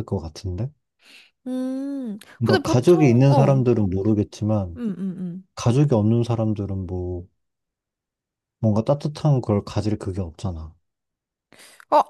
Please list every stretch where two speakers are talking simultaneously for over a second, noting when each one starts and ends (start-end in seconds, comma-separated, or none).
2.4-3.6